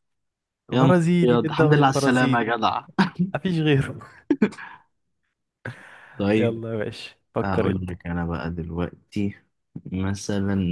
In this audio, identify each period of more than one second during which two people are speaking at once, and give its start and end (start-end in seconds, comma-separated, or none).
0.7-2.5